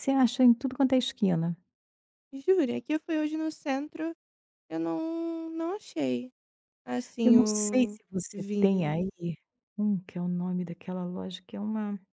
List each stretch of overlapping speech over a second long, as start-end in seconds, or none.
7.2-8.9